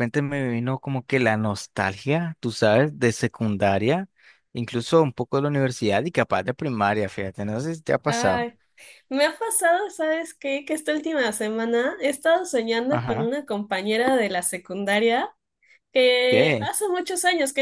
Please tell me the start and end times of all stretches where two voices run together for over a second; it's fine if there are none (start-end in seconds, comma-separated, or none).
none